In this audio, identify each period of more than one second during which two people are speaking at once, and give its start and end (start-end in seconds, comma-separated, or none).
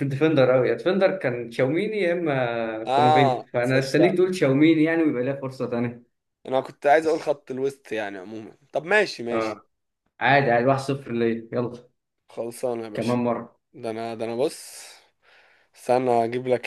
2.9-4.2